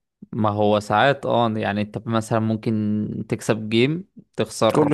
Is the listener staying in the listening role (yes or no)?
yes